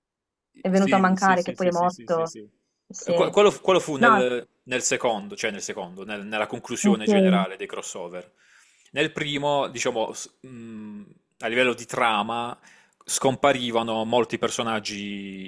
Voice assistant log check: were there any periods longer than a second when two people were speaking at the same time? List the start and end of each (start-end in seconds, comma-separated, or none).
0.7-2.3